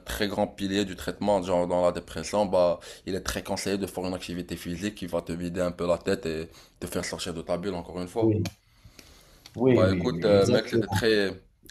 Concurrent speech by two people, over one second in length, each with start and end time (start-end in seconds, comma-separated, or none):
9.7-11.0